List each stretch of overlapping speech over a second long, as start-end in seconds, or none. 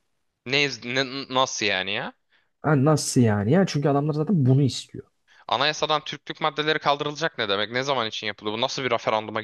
none